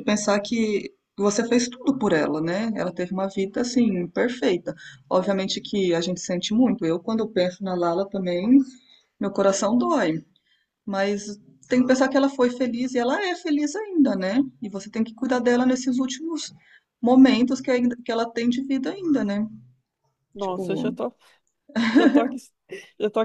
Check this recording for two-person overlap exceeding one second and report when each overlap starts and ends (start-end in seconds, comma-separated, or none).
none